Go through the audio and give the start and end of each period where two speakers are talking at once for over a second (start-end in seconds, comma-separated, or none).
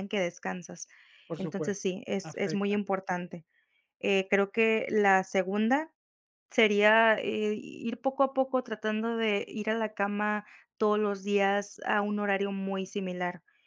1.4-2.8